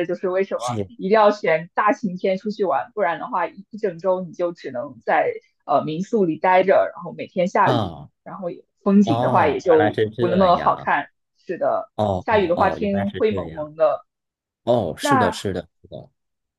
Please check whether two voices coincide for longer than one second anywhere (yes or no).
yes